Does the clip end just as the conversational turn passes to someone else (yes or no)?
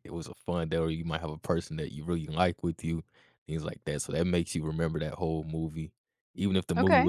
no